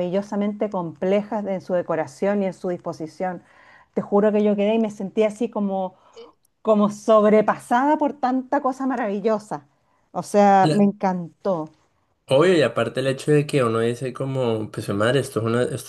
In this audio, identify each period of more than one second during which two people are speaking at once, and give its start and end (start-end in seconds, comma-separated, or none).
none